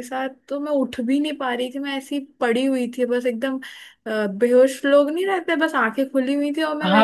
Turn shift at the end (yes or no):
yes